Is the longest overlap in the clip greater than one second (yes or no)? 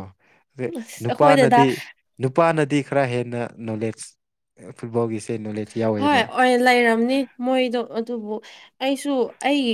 no